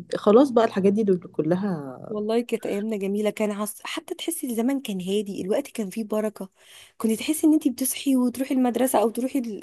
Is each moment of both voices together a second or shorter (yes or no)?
yes